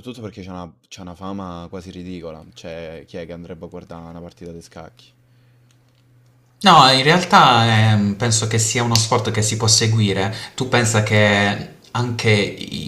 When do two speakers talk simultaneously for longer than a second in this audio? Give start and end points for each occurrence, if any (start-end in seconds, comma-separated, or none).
none